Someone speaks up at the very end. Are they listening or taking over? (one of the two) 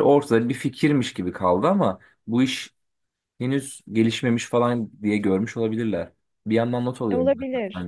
taking over